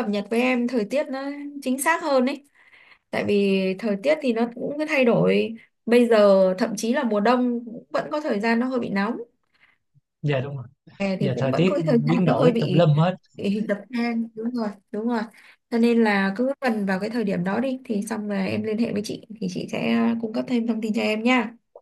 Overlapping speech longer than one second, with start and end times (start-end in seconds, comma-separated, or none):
11.2-12.9